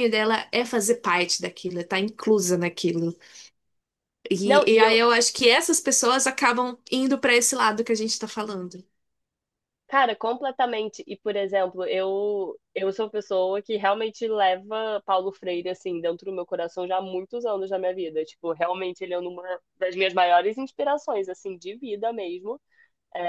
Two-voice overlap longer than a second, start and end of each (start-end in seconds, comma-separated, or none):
none